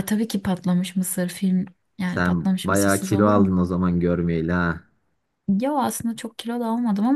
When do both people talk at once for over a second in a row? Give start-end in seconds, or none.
2.0-3.5